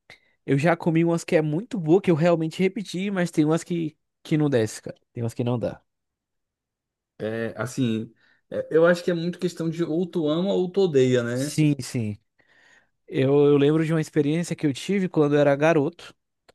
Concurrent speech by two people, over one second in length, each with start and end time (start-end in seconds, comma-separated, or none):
none